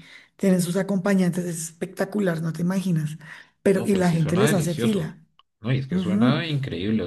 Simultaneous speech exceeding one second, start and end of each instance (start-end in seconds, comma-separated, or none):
3.7-5.1